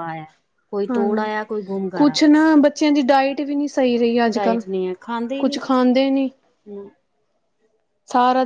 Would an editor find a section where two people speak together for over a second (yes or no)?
no